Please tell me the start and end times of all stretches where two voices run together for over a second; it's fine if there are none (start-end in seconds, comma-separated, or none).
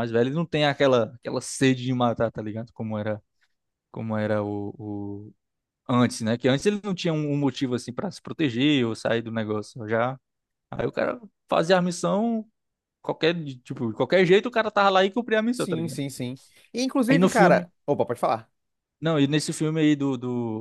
none